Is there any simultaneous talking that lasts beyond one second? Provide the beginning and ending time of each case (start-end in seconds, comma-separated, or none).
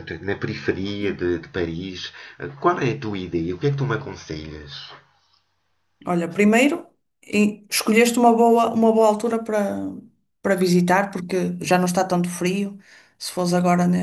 none